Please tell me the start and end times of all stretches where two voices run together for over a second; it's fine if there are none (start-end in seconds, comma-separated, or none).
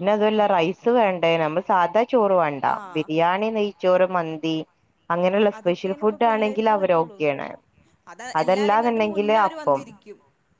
5.6-7.2, 8.4-9.8